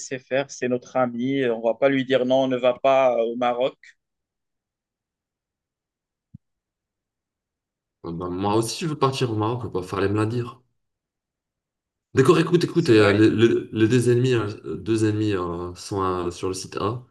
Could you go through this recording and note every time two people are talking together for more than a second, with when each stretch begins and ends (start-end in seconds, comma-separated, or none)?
none